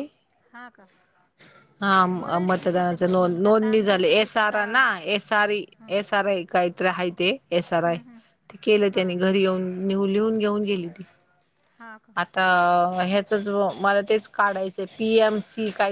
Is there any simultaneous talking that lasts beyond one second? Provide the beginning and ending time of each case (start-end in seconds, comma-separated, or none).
2.1-5.0